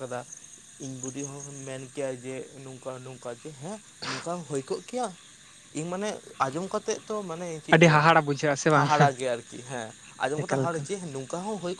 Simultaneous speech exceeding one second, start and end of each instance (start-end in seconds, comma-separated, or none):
none